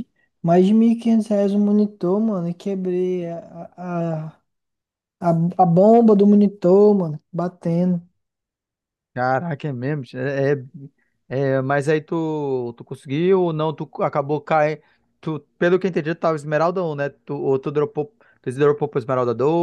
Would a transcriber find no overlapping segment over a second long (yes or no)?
yes